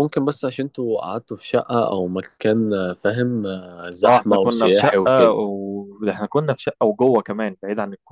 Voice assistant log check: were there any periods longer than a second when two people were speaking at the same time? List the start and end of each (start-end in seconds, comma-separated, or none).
4.0-5.4